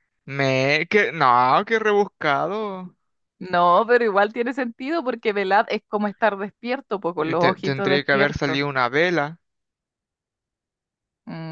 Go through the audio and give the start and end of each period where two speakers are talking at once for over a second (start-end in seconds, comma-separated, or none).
7.2-8.6